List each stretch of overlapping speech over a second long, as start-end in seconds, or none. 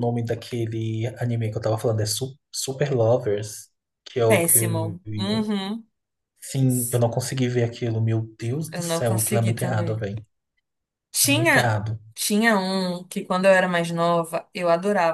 4.3-5.5, 8.7-10.0